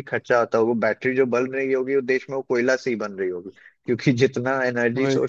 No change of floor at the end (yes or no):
yes